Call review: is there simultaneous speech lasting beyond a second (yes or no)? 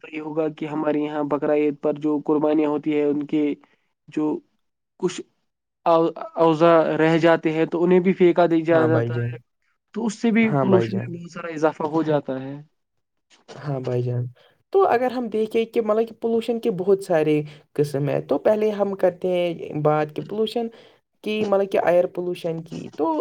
no